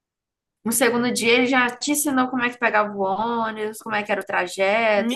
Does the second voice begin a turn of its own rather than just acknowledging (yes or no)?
yes